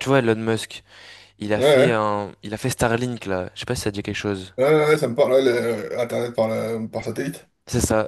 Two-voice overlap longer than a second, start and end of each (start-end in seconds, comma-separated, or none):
none